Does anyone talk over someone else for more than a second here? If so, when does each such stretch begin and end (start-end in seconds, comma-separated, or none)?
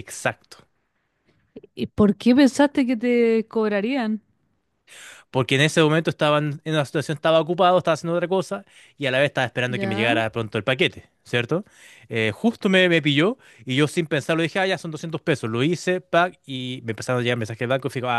none